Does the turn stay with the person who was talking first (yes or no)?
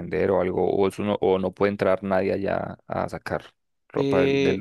no